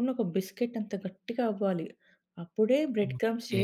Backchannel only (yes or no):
yes